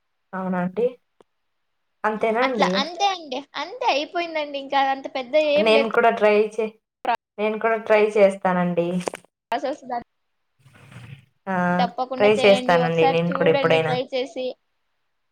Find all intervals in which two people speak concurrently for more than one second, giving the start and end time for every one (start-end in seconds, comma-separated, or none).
12.2-13.9